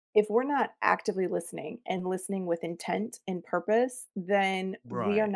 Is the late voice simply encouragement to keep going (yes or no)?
yes